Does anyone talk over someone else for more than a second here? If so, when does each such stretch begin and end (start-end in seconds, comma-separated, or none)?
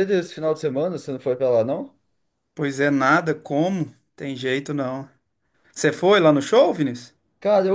none